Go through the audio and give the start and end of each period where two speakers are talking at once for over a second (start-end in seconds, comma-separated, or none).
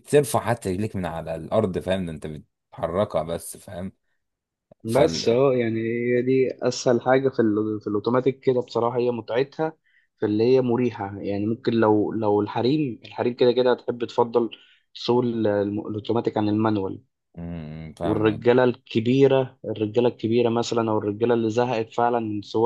none